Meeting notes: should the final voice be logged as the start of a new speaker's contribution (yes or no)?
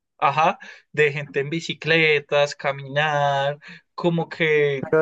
yes